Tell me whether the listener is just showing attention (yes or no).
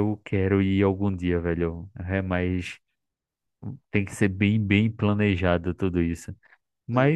yes